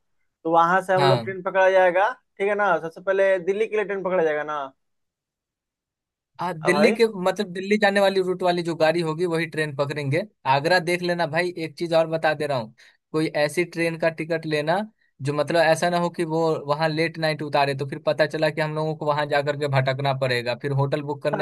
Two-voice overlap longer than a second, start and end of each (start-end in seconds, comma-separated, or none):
none